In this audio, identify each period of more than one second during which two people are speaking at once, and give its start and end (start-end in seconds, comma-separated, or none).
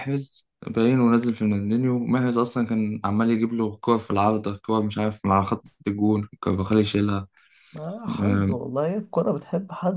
none